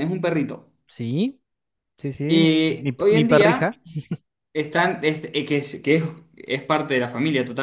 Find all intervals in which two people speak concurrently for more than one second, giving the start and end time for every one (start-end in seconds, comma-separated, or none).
2.3-3.7